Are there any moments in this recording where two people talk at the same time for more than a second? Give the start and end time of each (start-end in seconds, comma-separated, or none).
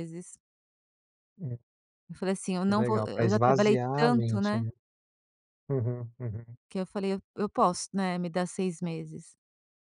2.6-4.7